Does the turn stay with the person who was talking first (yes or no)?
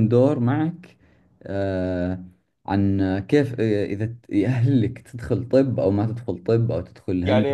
no